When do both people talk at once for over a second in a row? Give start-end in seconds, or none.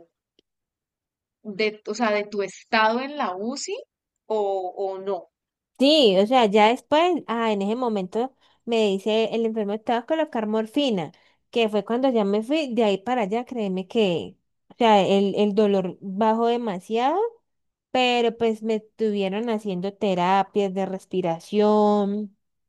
none